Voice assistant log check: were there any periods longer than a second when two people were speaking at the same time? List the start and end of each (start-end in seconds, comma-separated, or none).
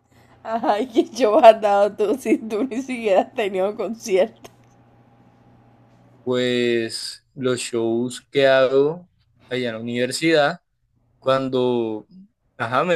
none